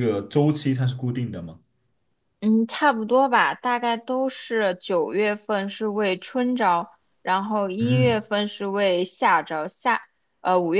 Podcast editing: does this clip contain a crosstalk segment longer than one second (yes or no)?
no